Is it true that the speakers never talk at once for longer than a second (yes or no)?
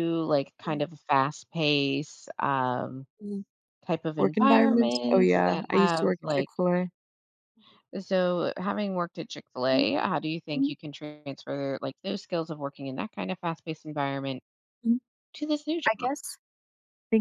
no